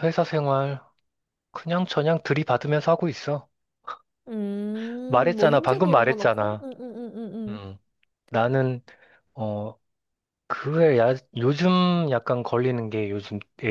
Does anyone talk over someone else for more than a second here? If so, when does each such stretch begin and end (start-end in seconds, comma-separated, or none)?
5.1-6.7